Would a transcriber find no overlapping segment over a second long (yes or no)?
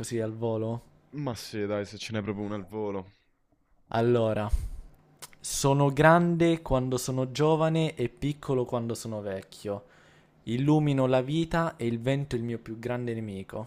yes